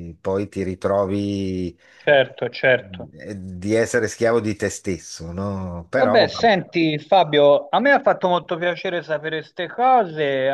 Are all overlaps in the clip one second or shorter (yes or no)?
yes